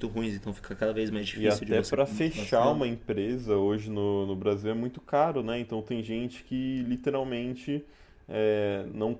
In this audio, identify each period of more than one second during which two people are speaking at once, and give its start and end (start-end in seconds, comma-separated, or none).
1.3-2.9